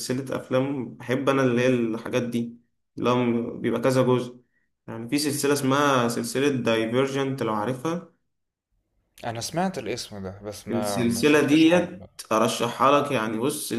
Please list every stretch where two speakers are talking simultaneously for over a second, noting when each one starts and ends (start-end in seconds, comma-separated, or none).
10.7-12.1